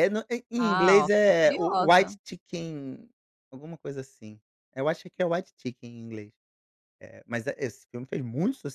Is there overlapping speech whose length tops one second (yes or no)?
yes